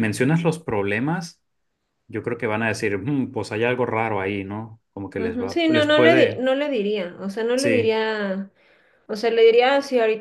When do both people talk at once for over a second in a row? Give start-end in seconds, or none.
5.2-6.4